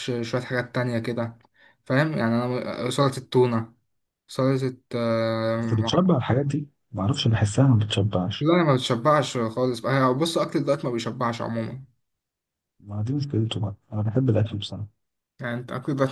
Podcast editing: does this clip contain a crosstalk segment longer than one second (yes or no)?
no